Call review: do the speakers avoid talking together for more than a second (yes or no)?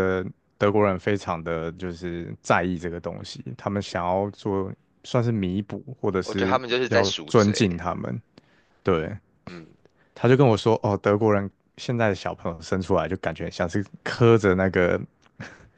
no